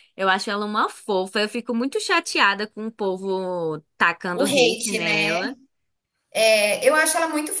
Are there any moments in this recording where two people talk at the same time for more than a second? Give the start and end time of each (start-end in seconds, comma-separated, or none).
4.3-5.5